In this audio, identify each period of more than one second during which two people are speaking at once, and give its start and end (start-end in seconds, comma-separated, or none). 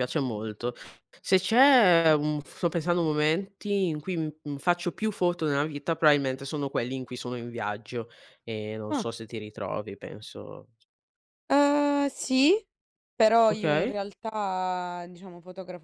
none